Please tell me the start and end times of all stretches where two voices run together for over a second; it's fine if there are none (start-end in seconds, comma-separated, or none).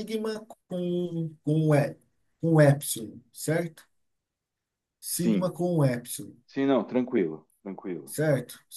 none